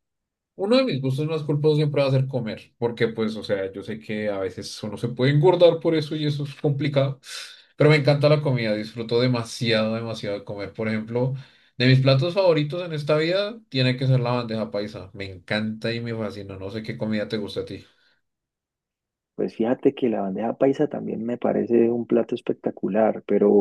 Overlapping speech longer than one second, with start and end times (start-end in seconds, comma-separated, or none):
none